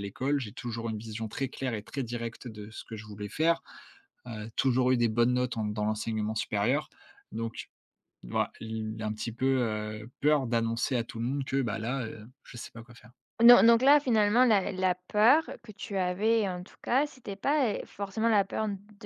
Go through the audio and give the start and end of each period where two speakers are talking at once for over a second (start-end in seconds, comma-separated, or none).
none